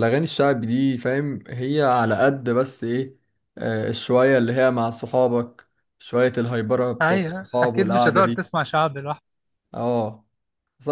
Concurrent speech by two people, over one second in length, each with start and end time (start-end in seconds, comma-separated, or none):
7.0-8.4